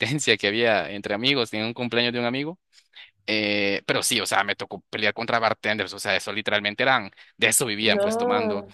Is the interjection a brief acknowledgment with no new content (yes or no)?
yes